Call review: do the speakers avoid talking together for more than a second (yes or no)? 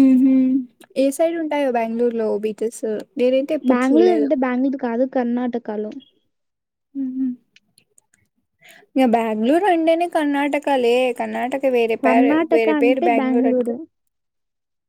no